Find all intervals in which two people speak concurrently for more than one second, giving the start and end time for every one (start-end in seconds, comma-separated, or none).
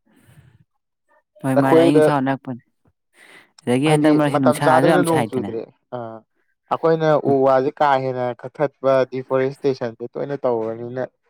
3.9-5.5